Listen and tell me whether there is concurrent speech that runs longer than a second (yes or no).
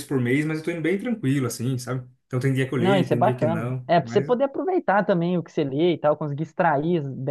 yes